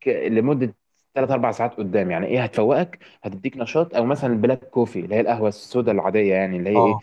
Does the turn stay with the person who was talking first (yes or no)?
yes